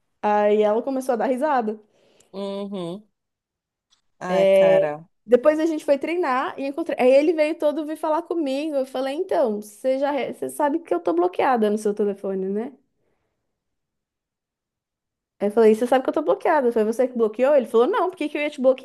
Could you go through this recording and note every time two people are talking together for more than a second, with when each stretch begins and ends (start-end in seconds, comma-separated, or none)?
none